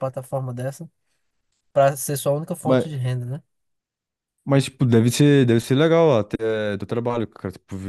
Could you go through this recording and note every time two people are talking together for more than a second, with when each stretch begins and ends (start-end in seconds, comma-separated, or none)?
none